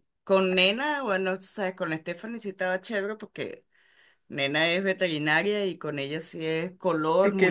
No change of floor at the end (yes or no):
yes